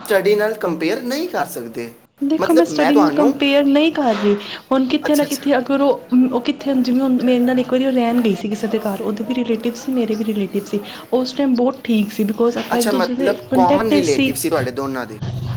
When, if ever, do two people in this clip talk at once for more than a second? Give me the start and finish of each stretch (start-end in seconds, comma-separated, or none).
12.7-14.3